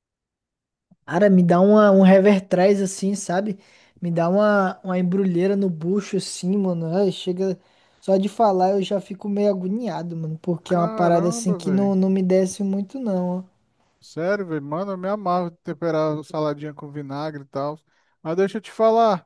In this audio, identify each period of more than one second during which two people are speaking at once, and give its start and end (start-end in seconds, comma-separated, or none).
10.7-11.9